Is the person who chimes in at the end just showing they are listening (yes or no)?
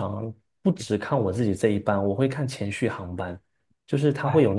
yes